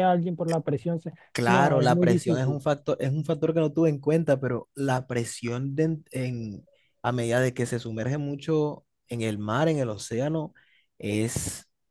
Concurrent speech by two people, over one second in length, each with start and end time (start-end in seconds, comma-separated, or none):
1.3-2.6